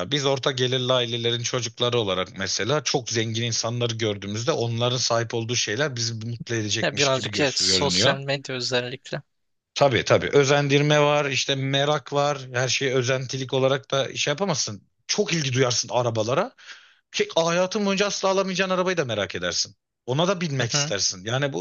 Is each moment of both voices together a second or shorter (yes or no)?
no